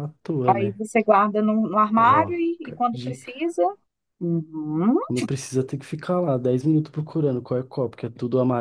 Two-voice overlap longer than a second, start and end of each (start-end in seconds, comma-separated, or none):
2.0-3.5